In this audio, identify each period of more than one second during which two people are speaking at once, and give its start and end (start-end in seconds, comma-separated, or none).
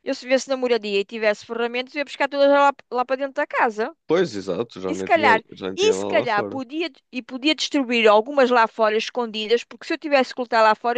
4.9-6.6